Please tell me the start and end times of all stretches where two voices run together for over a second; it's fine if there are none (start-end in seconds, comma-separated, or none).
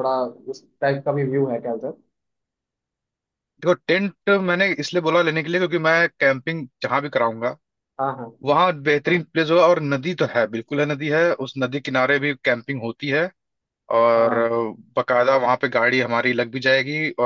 none